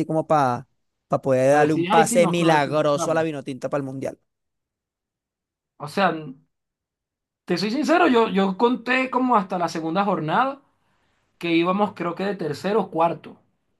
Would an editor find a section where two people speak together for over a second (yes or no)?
yes